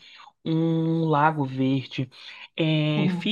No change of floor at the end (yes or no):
yes